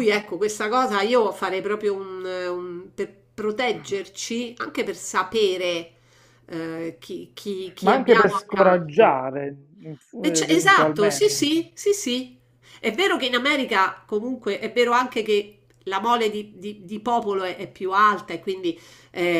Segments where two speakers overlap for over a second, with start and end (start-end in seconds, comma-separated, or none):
7.8-9.2, 10.2-11.5